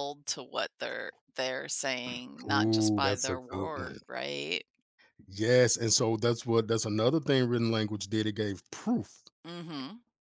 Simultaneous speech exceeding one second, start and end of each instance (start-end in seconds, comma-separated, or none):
2.4-4.0